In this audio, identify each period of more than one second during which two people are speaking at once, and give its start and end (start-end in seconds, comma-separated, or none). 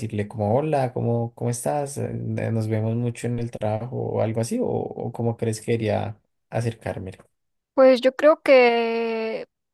none